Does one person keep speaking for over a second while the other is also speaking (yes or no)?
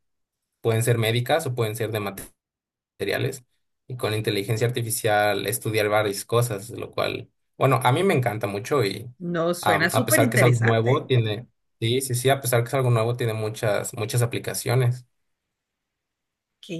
yes